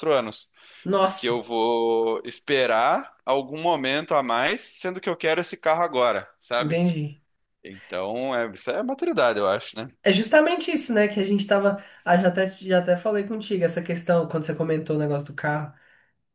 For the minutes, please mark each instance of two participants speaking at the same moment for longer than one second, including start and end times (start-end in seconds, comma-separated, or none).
none